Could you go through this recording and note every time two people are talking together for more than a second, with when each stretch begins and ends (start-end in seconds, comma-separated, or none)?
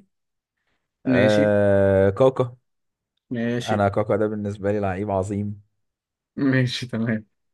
none